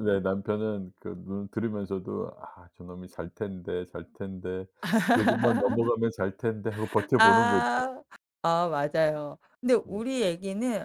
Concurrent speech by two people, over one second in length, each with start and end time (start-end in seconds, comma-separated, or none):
none